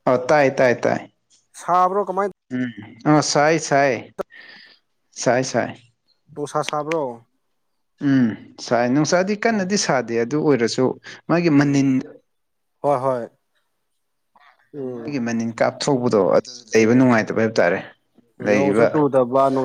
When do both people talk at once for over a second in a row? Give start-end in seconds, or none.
none